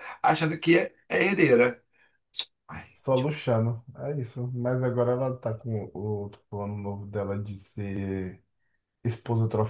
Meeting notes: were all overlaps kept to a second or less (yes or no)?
yes